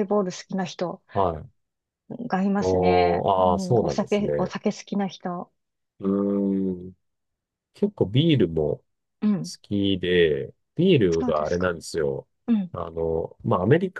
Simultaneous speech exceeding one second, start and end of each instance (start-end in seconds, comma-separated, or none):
2.6-4.5